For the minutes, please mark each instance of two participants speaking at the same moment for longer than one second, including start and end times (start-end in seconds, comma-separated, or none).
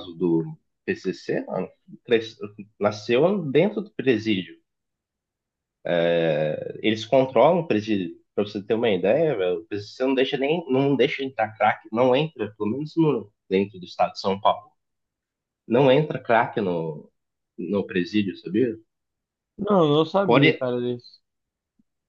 none